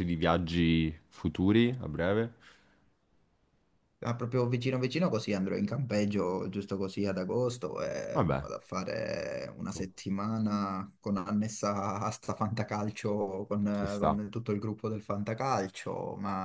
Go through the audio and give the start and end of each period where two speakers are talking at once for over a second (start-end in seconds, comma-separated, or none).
none